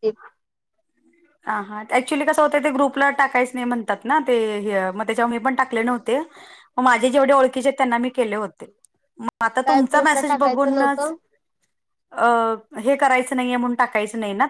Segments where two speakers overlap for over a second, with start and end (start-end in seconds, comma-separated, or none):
9.7-11.1